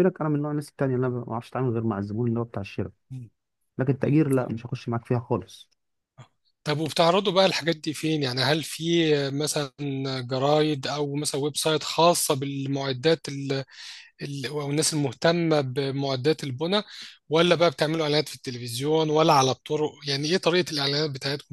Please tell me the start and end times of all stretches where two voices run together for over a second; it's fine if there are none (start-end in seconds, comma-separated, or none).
none